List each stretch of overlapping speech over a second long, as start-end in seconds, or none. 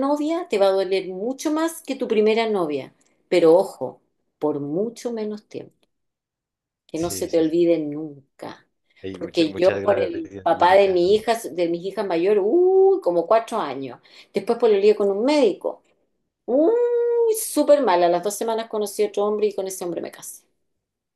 9.1-11.0